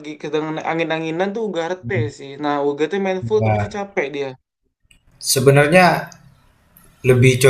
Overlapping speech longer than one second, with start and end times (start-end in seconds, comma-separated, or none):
none